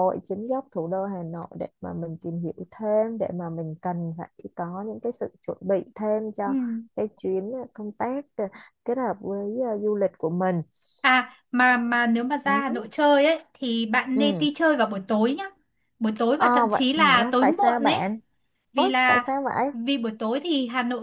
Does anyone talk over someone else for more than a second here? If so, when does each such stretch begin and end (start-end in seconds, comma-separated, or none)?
16.4-18.1